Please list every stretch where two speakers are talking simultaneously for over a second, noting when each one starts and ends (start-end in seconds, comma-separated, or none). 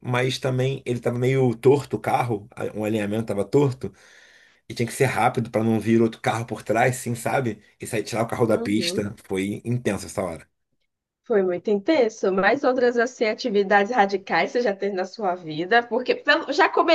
none